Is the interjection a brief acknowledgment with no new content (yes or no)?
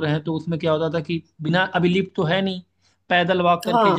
yes